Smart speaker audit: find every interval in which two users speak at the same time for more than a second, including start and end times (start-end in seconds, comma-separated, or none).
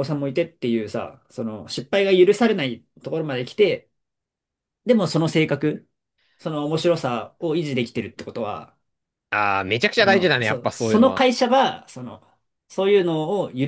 10.0-11.3